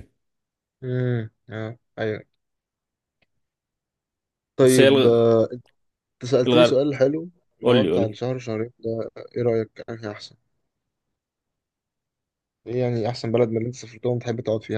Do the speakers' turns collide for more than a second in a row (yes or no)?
no